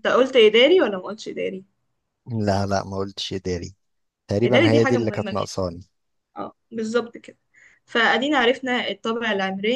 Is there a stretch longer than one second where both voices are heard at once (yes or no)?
yes